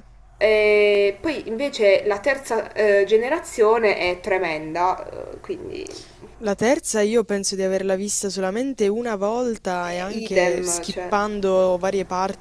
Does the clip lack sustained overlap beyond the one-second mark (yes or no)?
no